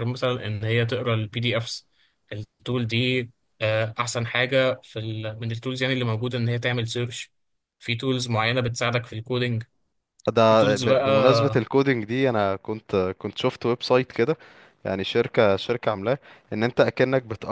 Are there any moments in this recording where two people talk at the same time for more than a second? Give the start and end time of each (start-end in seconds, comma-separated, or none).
10.5-11.7